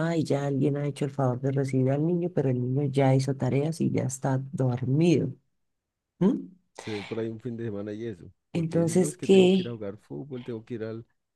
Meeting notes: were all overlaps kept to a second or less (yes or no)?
no